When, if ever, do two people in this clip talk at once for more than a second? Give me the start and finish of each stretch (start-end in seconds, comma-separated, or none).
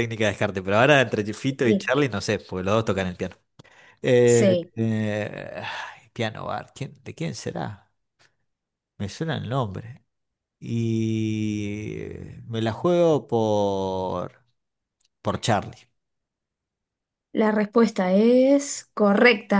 none